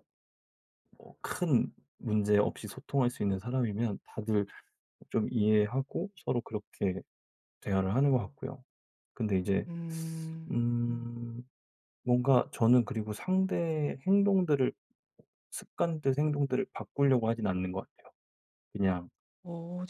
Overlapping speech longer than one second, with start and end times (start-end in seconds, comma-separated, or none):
none